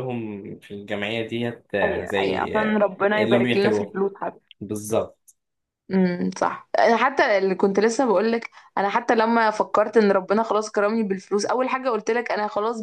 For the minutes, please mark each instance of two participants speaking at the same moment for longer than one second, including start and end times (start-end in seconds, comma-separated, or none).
1.8-4.0